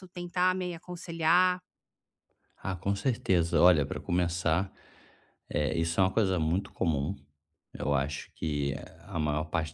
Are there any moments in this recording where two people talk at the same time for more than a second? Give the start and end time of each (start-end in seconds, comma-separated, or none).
none